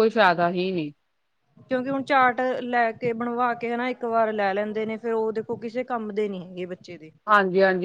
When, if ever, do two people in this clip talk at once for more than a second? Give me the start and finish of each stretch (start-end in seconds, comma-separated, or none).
none